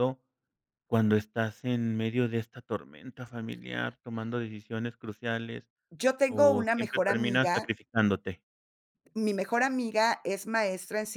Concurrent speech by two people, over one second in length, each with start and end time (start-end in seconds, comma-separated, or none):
6.3-7.8